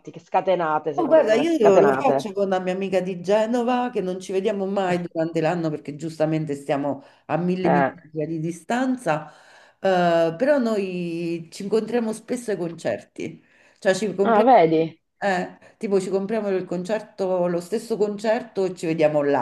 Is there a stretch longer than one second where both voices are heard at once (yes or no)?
yes